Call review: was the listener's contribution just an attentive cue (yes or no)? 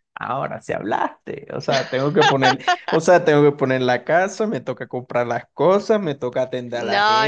no